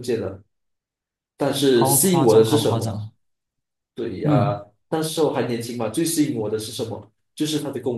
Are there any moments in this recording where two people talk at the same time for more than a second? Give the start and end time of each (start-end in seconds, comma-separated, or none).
1.7-3.0